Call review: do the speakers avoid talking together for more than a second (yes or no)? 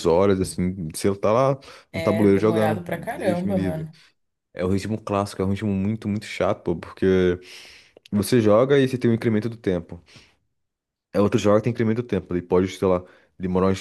no